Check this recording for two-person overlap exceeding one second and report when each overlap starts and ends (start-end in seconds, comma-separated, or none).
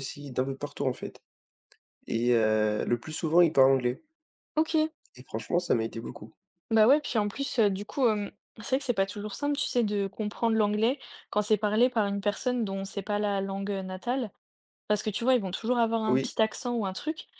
none